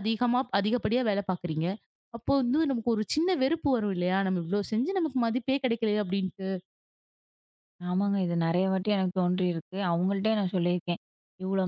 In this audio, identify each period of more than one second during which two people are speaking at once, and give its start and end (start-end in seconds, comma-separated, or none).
none